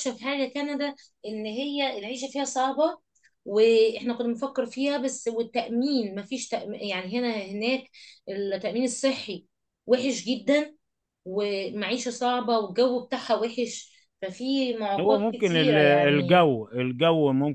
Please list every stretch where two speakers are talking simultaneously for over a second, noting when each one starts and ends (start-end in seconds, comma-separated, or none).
15.0-16.5